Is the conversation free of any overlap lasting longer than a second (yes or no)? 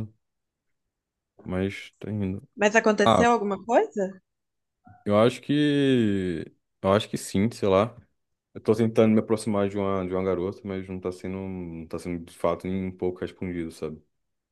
yes